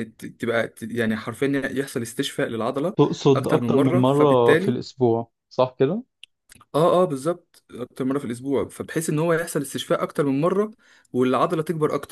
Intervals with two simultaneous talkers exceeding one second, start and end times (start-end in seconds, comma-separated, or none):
3.4-4.8